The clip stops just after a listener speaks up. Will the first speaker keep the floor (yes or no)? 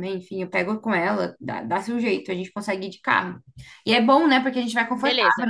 yes